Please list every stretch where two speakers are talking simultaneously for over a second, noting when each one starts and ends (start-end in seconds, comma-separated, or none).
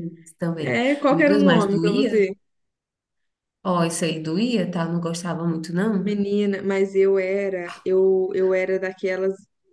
0.6-2.3